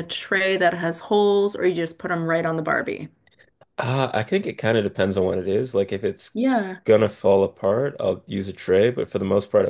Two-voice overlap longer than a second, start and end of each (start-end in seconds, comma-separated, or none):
none